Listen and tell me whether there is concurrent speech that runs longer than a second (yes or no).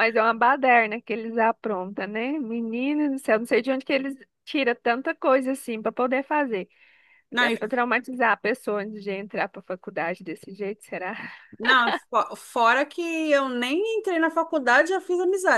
no